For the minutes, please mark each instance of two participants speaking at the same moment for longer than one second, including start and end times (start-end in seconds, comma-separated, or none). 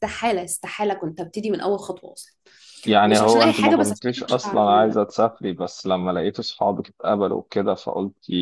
3.0-5.0